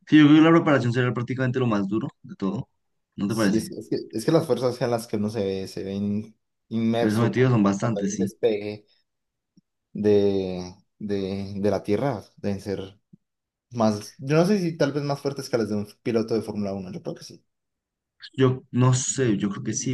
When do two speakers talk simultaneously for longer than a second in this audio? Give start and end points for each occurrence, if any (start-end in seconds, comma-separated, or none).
7.0-8.3